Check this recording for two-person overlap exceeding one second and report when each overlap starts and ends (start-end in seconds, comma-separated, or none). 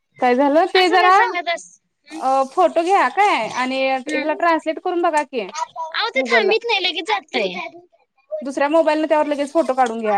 none